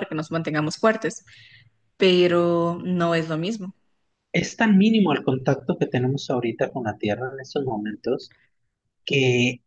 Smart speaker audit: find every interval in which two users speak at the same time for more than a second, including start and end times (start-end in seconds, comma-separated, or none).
none